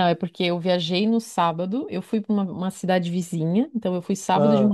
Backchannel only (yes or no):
yes